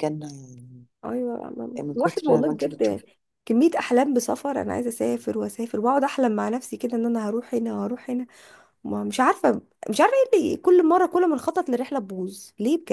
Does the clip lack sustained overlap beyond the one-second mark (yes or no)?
no